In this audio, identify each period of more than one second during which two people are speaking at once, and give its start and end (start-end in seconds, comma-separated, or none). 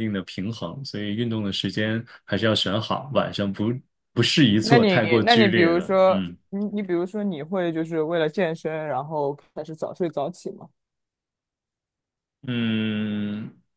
4.6-6.4